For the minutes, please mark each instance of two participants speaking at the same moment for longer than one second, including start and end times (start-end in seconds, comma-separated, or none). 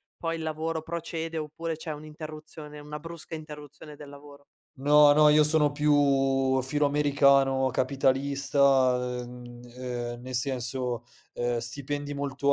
none